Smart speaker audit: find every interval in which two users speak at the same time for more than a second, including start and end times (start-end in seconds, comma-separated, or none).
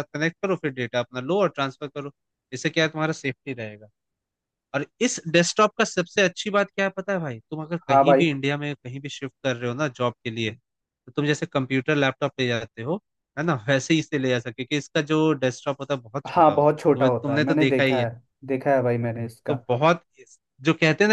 16.3-18.1